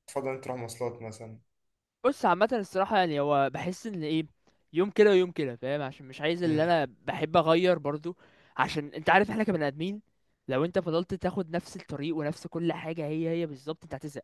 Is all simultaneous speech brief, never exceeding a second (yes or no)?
yes